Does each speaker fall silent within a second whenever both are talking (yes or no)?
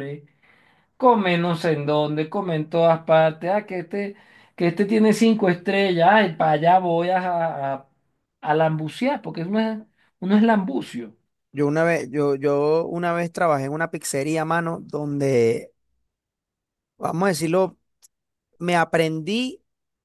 yes